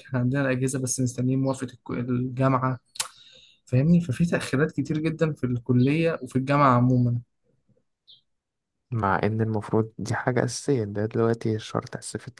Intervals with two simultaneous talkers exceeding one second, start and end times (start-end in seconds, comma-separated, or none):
none